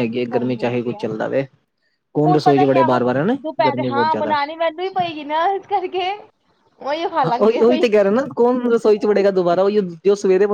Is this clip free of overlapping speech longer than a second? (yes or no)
no